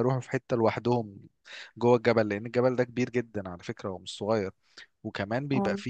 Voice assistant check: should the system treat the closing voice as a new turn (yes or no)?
no